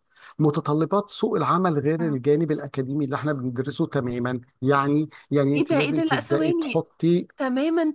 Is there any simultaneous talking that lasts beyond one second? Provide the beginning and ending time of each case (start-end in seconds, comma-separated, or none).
5.5-6.9